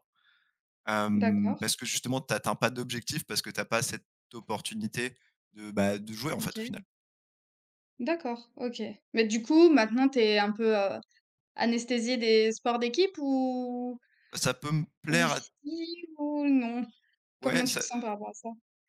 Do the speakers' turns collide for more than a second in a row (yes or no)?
no